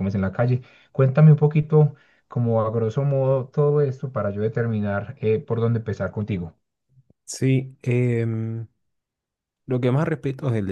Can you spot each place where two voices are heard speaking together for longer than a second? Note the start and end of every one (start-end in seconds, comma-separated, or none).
none